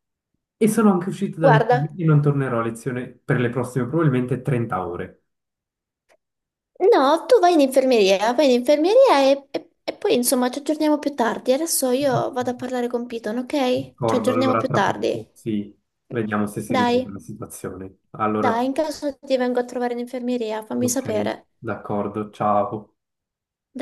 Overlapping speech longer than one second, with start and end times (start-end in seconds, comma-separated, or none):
14.0-15.2